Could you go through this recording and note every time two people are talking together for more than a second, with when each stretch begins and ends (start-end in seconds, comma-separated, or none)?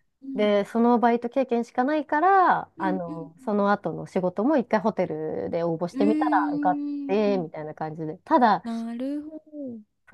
5.9-7.5